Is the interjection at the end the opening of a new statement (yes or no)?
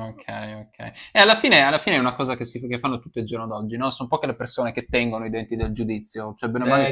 yes